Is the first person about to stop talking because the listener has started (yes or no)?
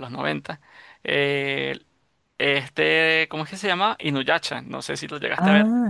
yes